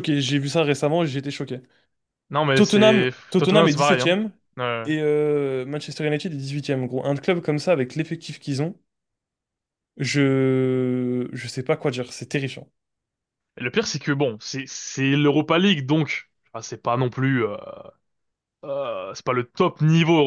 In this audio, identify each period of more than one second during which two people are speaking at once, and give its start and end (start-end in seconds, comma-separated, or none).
2.5-4.2